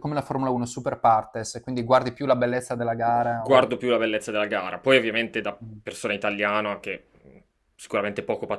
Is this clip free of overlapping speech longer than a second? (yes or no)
yes